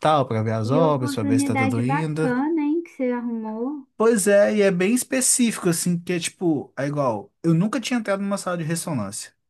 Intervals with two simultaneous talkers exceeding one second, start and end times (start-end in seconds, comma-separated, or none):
0.6-2.4